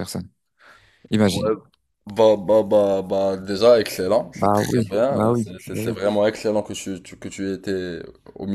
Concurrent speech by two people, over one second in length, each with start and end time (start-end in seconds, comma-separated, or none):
4.3-6.0